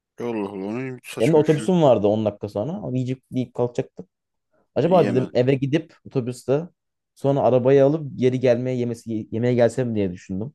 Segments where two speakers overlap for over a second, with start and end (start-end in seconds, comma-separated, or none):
none